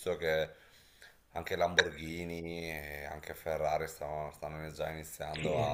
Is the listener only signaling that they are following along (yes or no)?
yes